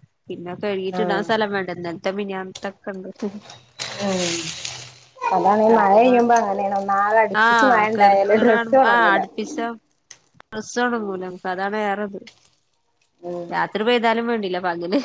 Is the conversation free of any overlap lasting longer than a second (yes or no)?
no